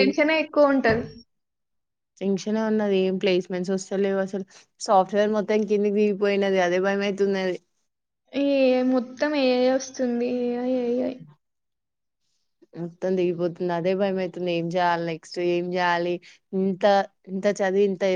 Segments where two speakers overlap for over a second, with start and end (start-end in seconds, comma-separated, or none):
none